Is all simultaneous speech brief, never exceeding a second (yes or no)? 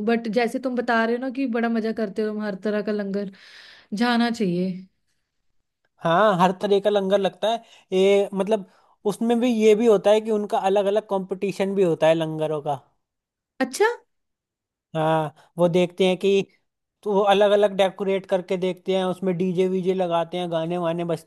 yes